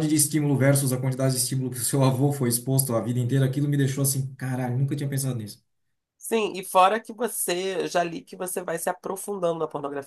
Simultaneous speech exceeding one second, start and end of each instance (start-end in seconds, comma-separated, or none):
none